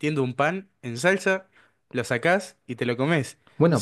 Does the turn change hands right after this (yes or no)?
no